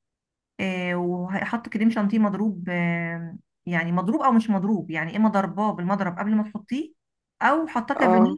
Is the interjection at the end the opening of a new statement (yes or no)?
no